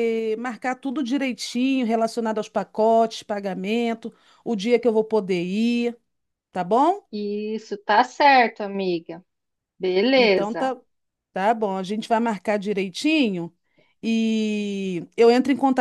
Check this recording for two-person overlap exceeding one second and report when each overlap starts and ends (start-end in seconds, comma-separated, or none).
none